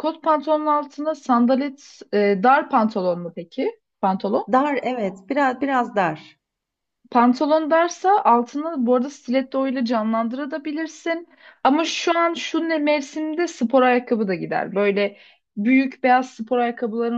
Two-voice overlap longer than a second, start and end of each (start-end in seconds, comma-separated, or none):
none